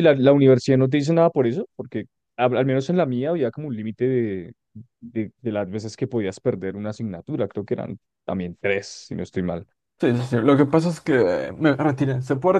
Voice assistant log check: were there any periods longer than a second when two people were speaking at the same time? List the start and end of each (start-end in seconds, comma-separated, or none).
none